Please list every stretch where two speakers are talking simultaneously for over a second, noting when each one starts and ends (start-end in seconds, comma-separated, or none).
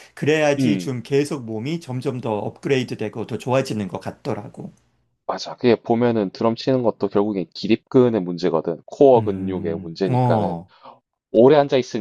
9.2-10.6